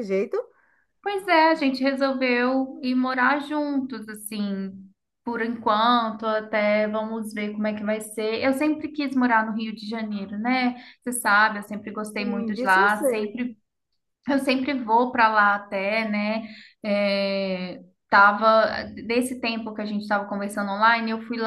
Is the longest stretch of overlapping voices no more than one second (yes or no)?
no